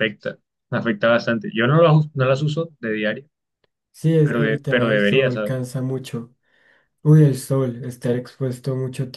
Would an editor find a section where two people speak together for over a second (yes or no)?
yes